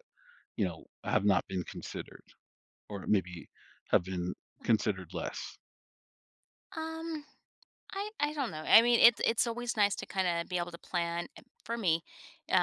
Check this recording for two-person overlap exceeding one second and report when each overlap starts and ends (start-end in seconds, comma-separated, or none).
none